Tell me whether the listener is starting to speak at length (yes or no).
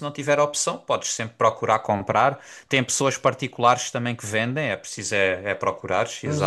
yes